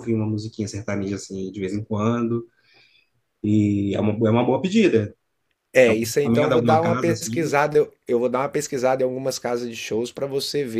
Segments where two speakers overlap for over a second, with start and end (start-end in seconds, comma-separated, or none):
5.8-7.5